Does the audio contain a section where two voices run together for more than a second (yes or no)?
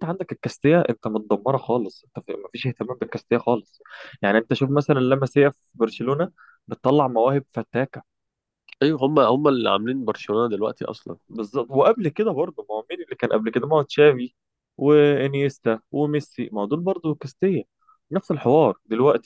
no